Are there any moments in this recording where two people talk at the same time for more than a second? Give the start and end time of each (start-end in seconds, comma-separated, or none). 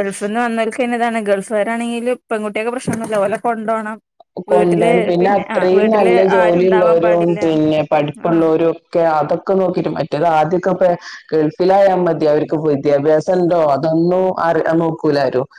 5.5-7.4